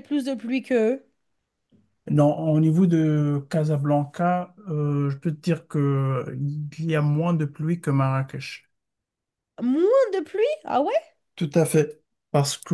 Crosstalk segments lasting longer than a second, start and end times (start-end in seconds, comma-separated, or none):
none